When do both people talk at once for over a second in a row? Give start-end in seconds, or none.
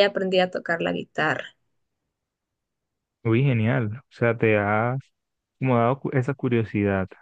none